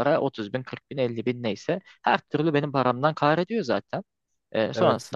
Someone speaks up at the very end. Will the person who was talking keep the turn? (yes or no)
yes